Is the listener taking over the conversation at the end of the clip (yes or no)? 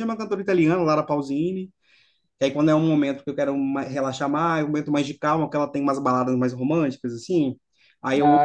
no